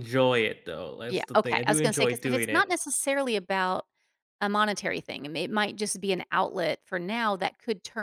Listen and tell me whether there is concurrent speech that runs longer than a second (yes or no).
yes